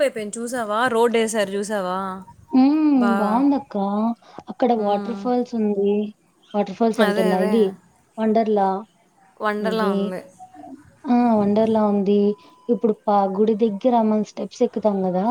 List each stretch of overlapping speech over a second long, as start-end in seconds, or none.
none